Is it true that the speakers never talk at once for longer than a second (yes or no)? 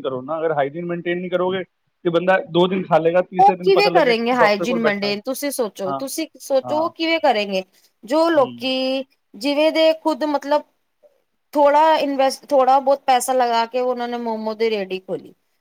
no